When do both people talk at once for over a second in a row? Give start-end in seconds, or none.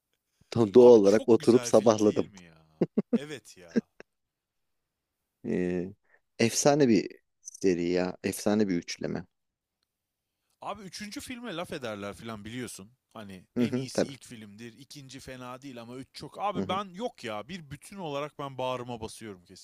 0.8-2.3